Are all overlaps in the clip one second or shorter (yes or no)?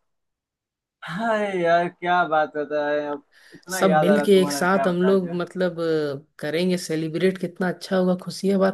no